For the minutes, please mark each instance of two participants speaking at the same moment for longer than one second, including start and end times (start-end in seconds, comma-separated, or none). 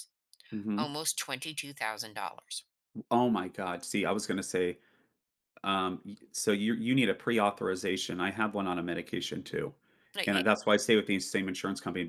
none